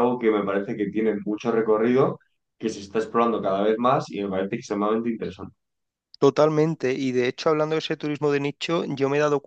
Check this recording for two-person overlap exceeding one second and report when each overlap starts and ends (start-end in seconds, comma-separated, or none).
none